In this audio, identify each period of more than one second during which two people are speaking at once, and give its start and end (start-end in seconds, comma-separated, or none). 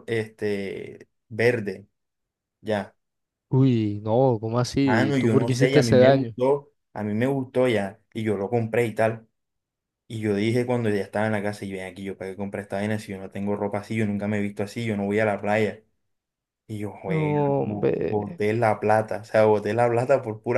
4.8-6.3, 17.1-18.4